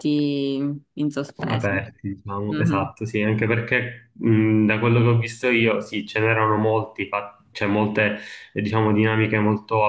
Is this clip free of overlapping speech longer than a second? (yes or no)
yes